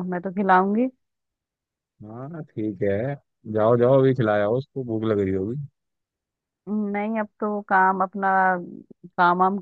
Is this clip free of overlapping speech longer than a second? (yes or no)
yes